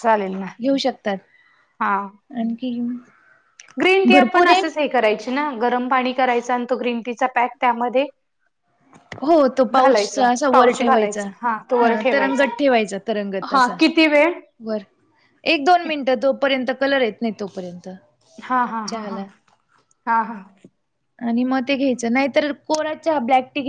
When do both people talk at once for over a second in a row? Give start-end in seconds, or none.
9.7-11.2